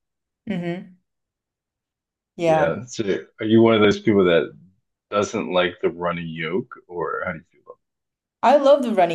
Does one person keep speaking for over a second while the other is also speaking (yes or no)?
no